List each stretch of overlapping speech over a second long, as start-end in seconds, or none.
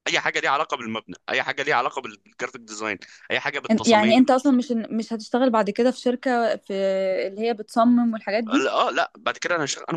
none